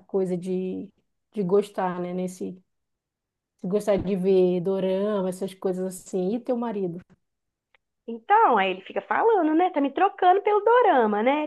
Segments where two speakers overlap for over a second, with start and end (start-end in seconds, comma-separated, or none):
none